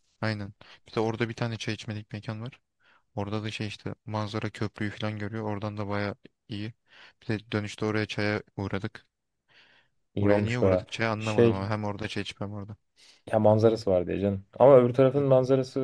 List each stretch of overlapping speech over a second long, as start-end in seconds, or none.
10.2-11.7